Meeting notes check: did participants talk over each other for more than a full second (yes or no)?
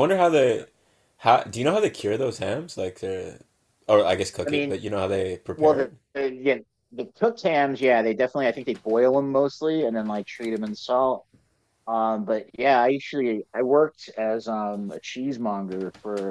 no